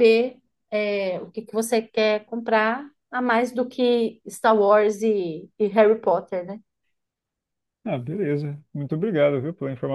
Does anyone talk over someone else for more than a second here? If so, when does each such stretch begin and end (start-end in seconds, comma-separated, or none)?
none